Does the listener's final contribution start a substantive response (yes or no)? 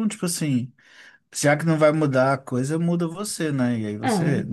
no